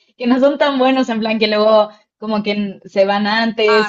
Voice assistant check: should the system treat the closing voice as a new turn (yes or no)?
yes